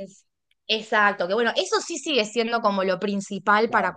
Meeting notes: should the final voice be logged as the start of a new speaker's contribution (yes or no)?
no